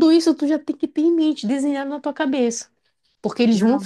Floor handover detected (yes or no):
no